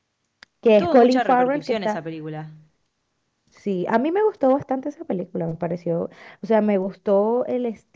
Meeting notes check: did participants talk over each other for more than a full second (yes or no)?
yes